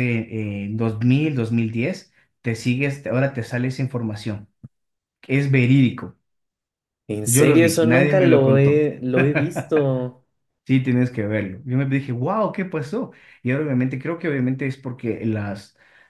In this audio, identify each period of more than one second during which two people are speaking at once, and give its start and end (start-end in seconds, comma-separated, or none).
7.2-8.9